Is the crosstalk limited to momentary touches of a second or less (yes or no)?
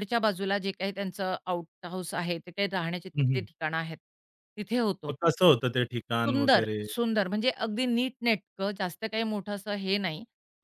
yes